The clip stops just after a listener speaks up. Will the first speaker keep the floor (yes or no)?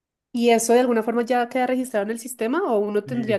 no